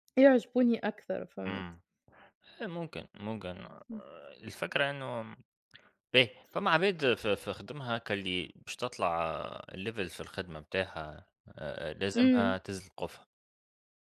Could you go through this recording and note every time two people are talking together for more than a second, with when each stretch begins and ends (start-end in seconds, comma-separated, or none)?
none